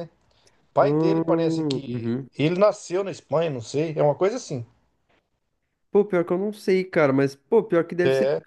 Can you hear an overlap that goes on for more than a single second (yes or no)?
yes